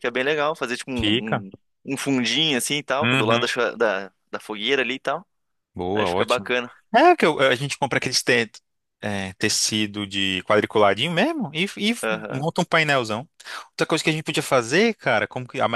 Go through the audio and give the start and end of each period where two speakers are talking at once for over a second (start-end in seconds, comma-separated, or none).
none